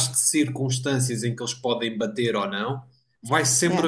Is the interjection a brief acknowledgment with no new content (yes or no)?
yes